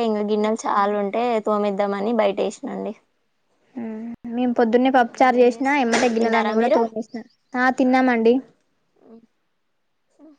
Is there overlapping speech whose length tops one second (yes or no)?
yes